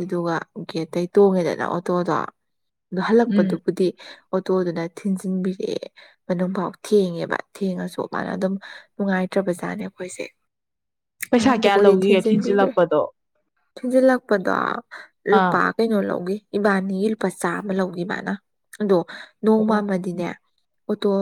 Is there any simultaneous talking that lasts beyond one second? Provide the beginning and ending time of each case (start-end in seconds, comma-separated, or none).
11.3-12.7